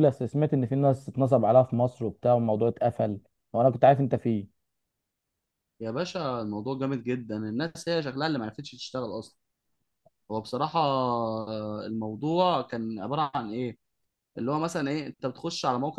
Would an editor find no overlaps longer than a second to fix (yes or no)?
yes